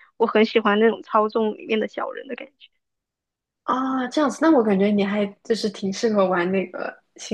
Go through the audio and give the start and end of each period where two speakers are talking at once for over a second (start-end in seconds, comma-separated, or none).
none